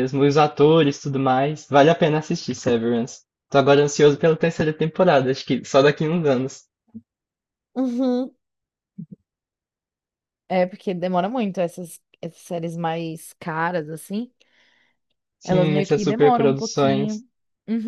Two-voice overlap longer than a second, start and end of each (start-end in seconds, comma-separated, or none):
15.4-17.2